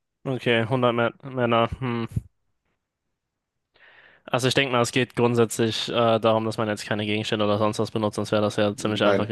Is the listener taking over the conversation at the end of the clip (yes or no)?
no